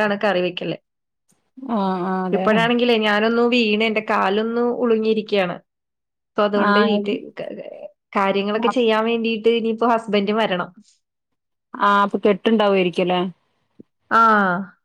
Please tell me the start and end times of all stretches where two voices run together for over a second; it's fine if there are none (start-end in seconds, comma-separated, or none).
none